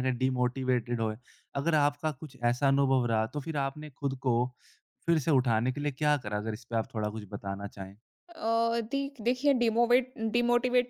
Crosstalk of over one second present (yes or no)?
no